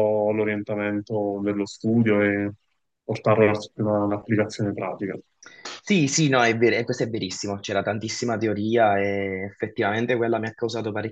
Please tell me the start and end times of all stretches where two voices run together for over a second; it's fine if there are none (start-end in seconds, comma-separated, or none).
none